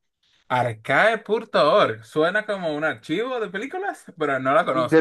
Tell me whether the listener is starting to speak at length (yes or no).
yes